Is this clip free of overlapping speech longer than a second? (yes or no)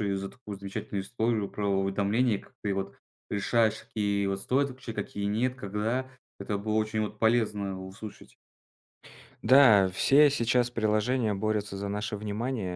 yes